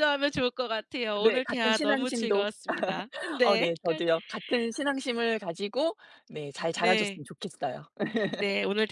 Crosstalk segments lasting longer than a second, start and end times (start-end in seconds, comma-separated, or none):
1.2-2.5